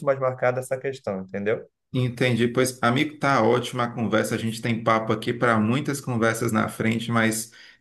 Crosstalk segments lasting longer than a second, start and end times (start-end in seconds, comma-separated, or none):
none